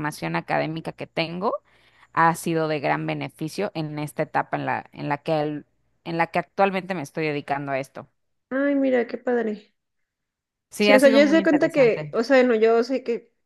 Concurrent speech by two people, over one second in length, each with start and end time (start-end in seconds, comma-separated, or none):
10.8-12.1